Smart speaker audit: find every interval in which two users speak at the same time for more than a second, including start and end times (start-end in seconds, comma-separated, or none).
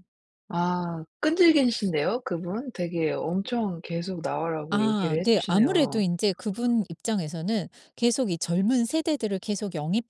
4.7-6.0